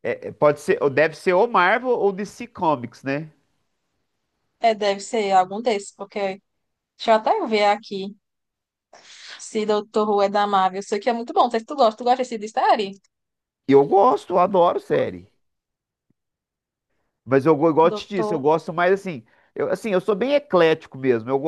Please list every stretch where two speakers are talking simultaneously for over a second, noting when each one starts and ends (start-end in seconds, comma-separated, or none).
none